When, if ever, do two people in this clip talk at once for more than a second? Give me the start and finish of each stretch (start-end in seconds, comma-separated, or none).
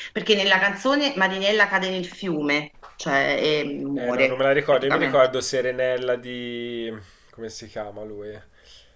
4.0-5.3